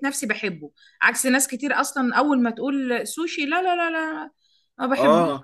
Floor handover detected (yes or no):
yes